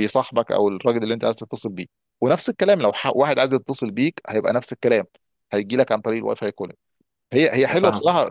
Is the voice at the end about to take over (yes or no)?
no